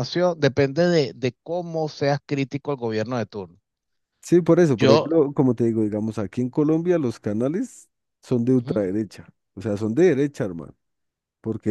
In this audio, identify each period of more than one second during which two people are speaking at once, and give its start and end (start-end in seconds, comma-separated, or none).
none